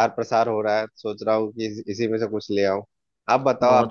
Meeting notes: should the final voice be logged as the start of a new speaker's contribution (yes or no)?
yes